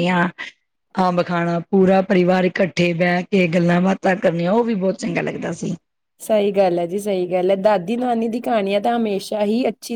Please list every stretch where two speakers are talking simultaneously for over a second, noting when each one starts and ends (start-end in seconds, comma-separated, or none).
none